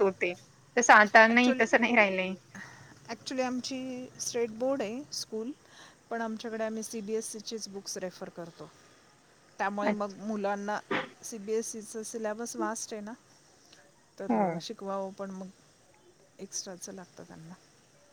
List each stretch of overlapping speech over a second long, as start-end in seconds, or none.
none